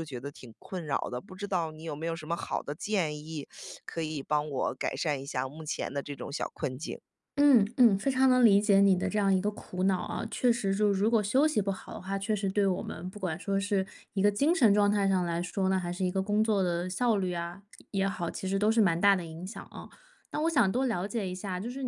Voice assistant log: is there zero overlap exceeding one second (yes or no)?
yes